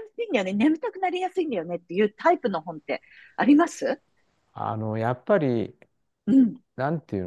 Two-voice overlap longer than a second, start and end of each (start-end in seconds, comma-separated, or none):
none